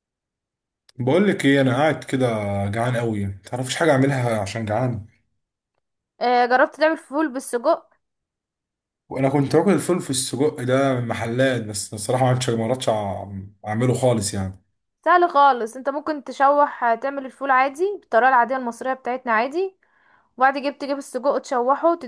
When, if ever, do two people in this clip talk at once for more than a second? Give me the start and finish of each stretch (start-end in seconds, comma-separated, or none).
none